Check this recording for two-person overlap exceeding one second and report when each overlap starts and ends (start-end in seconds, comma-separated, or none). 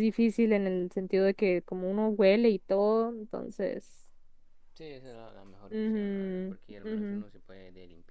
5.7-7.2